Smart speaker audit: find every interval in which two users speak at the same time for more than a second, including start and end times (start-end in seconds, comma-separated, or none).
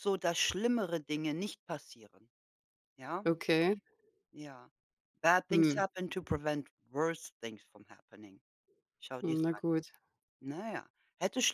none